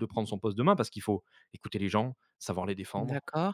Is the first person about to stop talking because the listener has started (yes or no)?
no